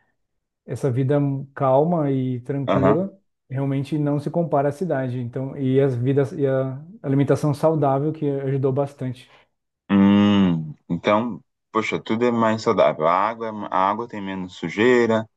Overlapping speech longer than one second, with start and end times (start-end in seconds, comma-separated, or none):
none